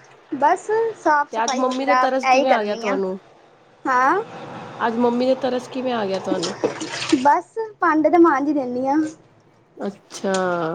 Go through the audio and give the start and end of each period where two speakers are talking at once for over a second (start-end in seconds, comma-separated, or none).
1.3-3.0